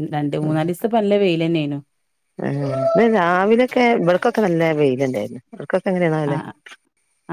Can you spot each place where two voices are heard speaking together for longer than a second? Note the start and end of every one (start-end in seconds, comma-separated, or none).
none